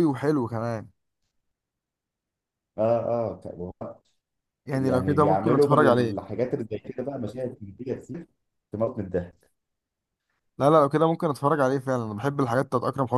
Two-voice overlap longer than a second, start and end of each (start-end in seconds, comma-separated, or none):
4.7-6.2